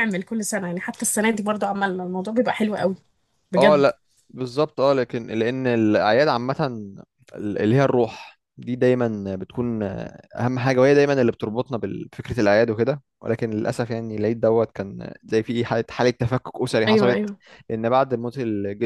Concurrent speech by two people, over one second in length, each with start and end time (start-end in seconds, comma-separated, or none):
none